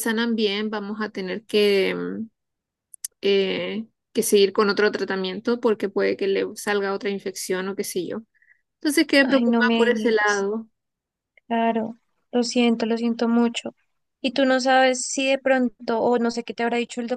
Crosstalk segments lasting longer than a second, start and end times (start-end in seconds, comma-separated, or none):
9.2-10.5